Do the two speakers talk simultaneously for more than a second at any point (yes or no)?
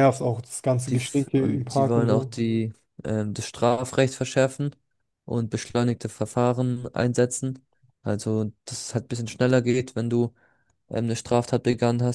yes